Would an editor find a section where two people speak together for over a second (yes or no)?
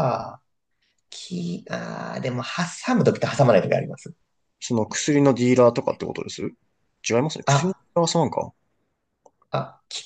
no